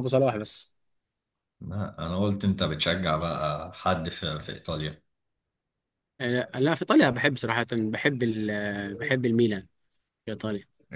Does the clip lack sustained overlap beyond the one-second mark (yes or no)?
yes